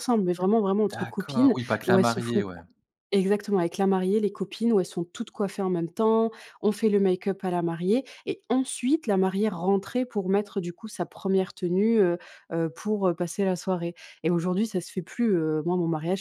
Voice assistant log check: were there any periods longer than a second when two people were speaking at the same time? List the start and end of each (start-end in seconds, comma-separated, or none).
0.9-2.6